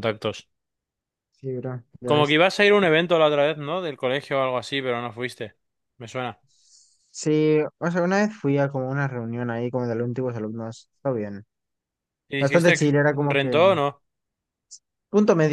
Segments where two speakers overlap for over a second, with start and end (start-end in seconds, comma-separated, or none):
12.4-13.6